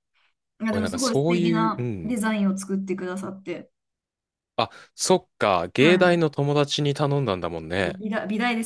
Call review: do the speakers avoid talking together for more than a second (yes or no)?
no